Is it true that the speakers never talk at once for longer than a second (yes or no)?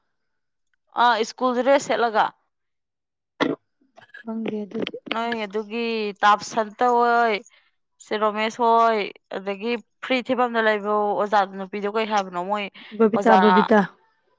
yes